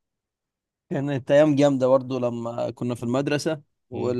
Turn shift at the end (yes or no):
no